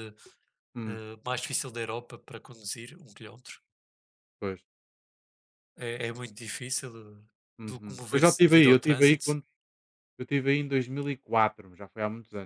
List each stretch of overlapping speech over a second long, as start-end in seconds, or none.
7.7-9.4